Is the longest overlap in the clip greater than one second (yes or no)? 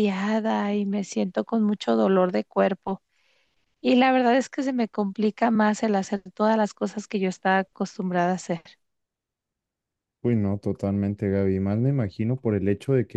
no